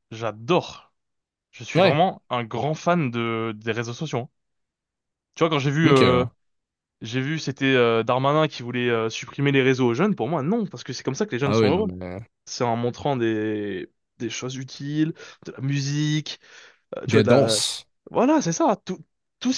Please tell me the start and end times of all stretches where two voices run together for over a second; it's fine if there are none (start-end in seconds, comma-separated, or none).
none